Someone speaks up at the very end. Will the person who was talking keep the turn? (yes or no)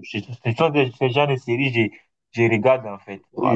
no